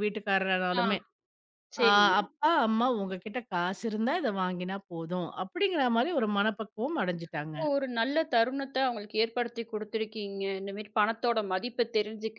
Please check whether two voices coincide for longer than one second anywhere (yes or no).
no